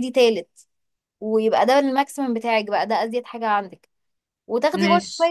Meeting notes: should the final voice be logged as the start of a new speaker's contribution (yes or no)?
no